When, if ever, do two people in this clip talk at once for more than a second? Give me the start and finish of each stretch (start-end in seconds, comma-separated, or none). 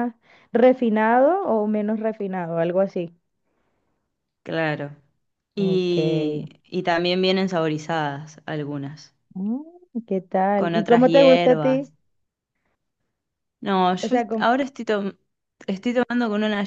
10.6-11.9